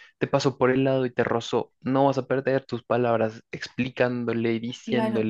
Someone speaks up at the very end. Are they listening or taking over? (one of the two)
taking over